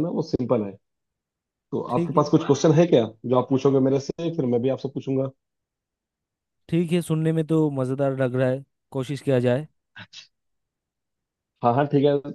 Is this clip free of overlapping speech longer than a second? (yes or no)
yes